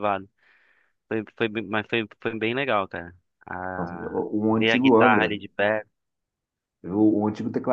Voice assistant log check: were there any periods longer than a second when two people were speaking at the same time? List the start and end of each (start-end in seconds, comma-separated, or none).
3.8-5.4